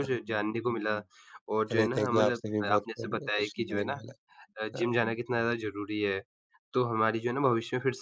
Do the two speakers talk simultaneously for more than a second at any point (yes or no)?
yes